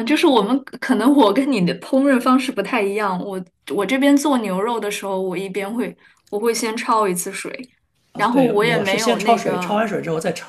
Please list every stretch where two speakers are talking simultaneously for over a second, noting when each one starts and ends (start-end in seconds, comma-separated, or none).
8.2-9.8